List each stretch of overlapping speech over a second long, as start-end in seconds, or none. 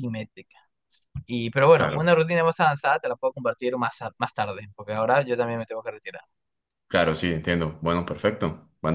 none